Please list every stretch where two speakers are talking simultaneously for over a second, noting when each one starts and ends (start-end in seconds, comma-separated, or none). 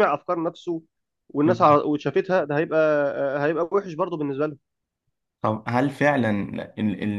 none